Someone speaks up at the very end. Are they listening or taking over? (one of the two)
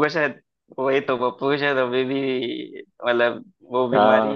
taking over